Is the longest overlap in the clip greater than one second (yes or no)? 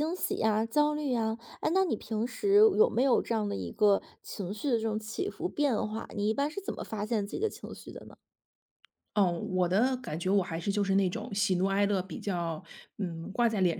no